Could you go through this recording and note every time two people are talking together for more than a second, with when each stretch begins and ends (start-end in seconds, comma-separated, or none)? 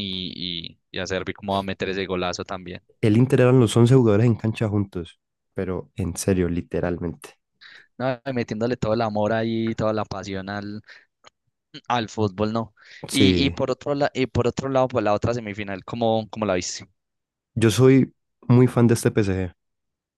none